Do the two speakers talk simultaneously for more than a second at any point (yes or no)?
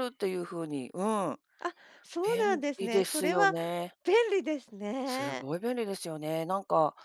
yes